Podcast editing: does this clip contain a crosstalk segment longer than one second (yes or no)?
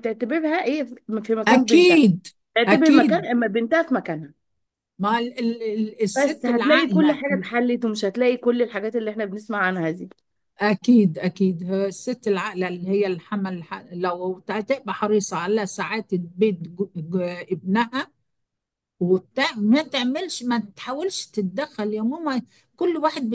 yes